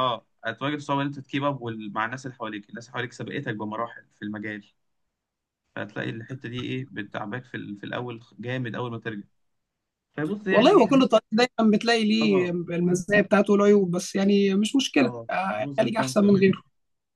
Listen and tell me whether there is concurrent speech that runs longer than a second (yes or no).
yes